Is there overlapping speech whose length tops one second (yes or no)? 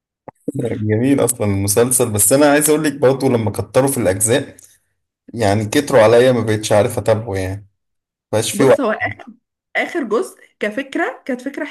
no